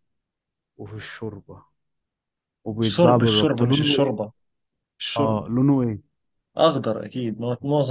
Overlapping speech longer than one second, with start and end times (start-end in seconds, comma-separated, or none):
2.8-4.1